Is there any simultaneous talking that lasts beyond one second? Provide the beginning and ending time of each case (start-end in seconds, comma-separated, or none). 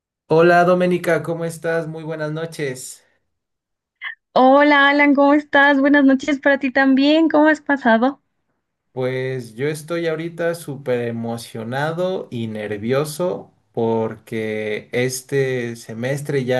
none